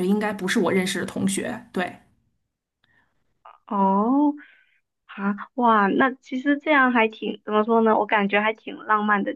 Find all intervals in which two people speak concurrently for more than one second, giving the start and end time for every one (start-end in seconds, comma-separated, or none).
none